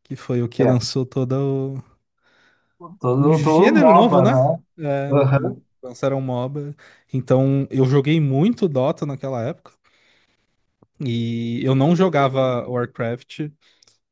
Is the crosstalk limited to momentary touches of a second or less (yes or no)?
no